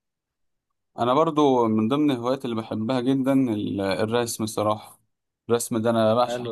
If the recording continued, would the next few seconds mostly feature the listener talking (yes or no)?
no